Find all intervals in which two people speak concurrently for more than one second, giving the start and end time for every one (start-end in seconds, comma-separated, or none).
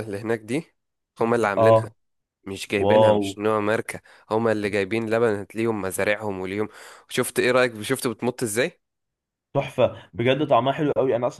none